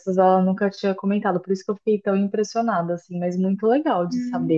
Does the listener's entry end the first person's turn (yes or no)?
yes